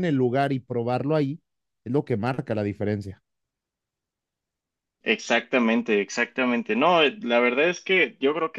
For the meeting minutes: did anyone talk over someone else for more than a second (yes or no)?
no